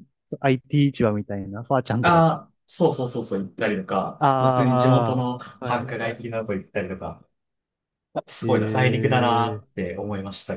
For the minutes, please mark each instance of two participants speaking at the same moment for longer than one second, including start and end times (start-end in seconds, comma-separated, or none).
4.2-6.1, 8.4-9.6